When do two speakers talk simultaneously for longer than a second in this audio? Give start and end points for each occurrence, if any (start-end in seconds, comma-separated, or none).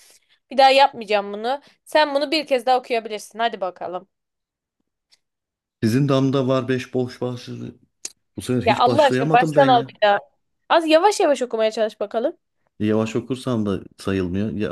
8.6-9.9